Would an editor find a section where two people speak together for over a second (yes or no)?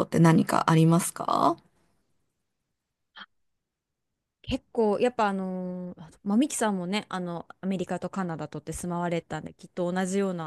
no